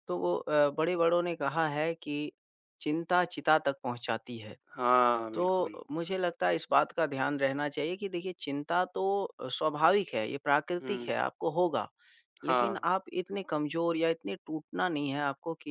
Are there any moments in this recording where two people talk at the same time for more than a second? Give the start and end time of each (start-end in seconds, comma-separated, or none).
none